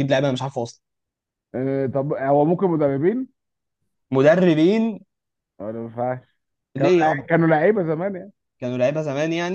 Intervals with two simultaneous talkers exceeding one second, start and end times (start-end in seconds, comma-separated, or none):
none